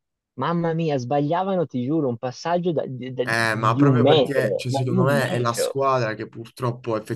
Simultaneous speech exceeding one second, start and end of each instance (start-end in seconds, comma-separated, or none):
3.2-5.8